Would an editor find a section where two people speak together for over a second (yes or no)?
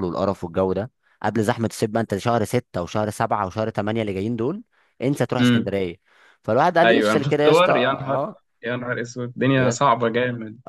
yes